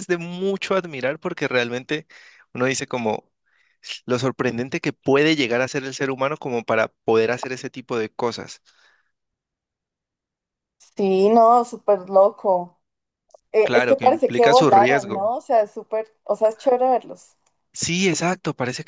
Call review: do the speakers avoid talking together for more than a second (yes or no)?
no